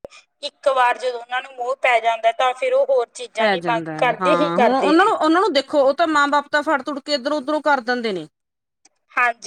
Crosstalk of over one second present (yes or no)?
yes